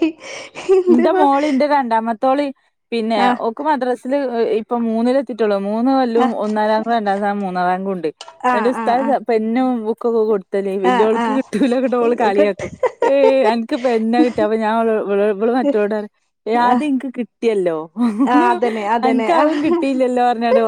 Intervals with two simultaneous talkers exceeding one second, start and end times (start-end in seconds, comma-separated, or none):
10.9-12.6